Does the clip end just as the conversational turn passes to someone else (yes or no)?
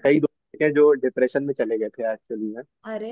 no